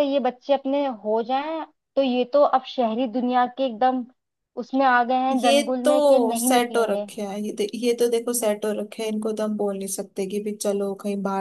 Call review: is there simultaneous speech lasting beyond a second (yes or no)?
yes